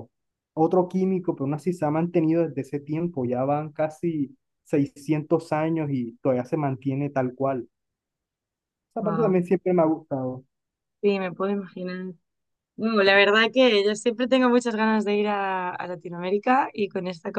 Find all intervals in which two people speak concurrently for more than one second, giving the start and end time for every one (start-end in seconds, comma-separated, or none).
none